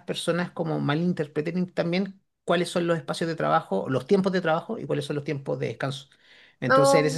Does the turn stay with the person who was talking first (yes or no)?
yes